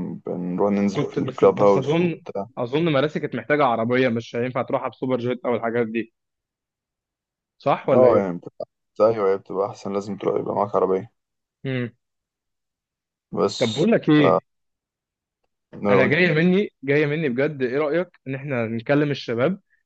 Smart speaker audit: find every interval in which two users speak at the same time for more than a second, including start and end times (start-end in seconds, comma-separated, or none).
0.9-2.2